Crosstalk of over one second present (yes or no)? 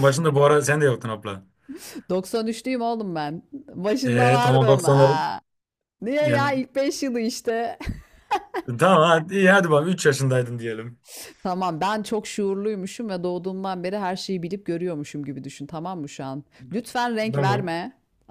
yes